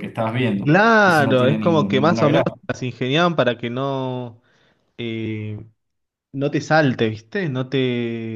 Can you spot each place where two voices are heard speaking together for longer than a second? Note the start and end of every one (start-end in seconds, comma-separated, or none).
0.6-2.5